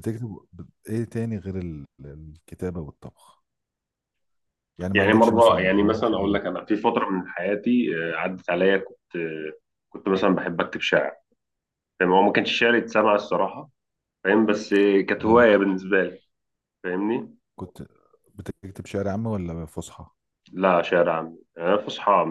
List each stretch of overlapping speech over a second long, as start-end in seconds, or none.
4.9-6.4